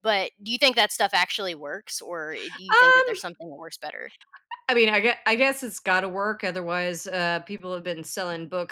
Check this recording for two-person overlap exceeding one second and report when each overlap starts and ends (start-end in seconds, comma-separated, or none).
none